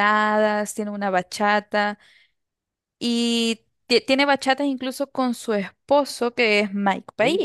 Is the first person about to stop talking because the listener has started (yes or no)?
no